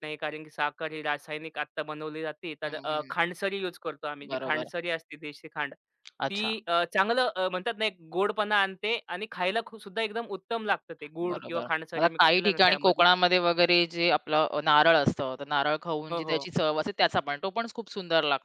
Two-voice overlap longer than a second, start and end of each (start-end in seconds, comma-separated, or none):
11.3-13.1